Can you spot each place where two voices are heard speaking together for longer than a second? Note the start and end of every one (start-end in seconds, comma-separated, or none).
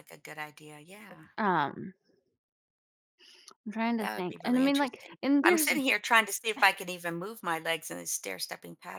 4.0-5.7